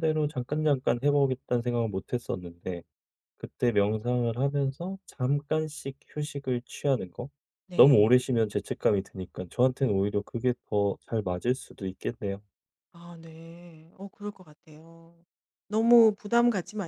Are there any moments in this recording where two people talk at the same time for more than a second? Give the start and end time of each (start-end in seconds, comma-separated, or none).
none